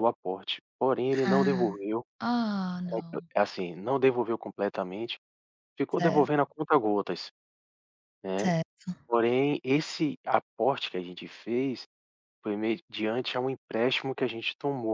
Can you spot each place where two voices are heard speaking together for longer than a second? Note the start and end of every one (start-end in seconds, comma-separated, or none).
none